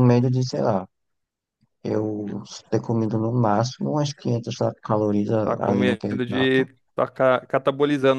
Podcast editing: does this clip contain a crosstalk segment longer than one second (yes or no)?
yes